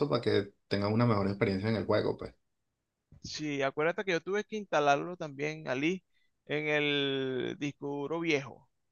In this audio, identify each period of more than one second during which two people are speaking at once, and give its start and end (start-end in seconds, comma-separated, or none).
none